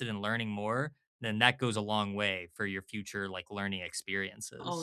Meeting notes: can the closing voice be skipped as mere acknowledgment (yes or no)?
no